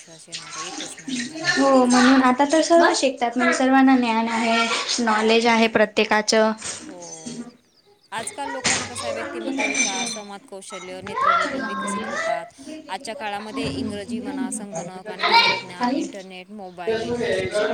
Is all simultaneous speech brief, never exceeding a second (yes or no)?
yes